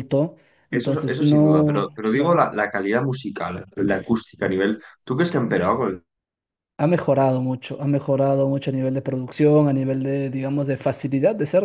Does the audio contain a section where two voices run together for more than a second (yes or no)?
yes